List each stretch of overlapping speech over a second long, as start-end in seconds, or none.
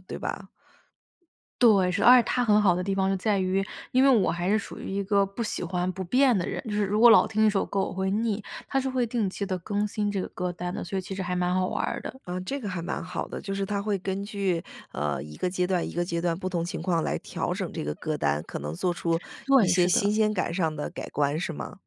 none